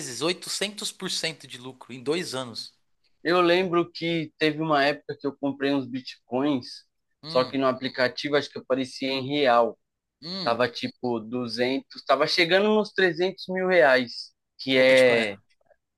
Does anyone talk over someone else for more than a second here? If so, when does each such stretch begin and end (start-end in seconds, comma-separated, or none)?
none